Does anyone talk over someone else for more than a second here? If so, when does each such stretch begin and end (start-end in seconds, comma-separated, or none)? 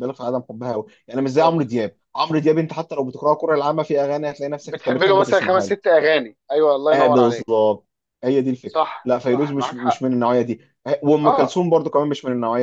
4.6-5.9, 8.7-10.0